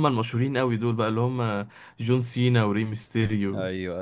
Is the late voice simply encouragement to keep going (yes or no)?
no